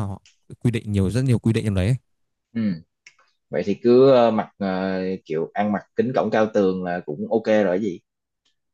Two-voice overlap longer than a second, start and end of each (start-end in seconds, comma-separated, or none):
none